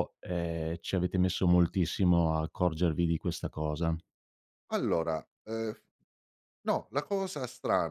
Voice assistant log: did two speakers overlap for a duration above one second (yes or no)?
no